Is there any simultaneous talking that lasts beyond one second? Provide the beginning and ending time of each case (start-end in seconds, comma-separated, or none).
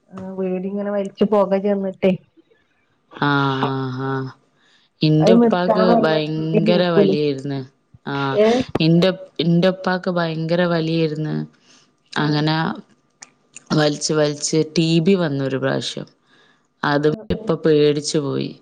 5.2-7.1